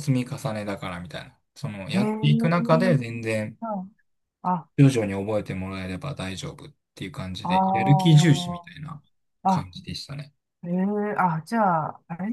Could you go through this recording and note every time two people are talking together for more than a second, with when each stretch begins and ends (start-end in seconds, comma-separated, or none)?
7.4-8.7